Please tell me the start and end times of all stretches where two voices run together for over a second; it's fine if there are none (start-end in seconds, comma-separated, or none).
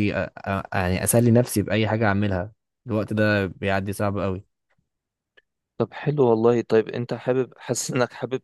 none